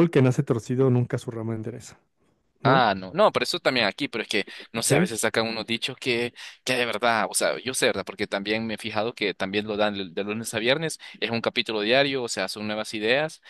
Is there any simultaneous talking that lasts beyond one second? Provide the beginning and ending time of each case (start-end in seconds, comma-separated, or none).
none